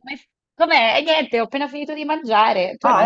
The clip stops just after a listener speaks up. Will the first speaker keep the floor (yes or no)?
no